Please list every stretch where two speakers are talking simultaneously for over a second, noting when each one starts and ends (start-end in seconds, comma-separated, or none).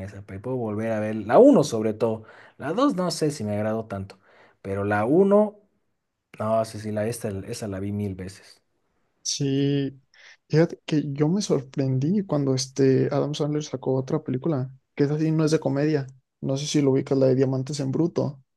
none